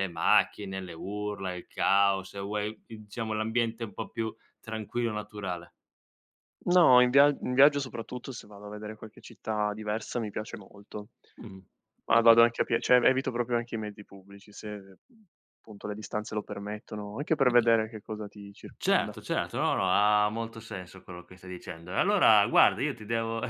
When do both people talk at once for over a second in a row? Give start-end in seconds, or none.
none